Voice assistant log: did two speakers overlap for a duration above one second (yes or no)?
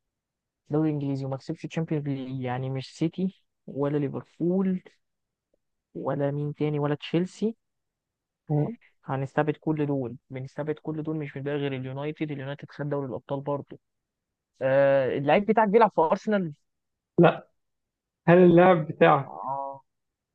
no